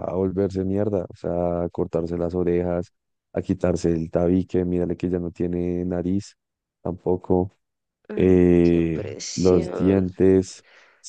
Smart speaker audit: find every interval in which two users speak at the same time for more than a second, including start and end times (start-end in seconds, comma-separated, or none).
8.2-10.1